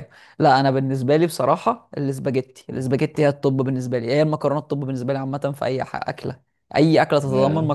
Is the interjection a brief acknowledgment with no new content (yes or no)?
yes